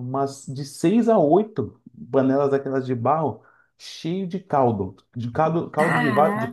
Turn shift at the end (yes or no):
no